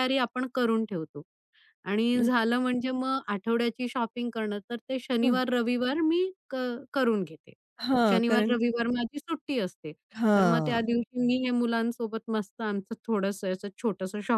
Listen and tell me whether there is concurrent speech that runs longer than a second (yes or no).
no